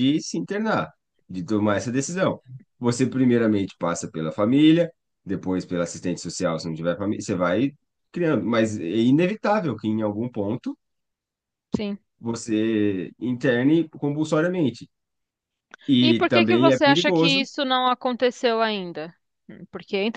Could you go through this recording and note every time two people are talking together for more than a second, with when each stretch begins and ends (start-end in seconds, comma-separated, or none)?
16.0-17.5